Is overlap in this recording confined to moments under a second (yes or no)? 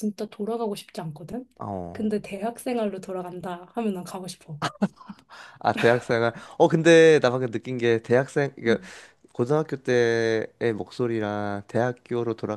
yes